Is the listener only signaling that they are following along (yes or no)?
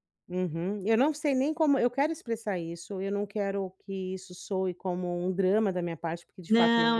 no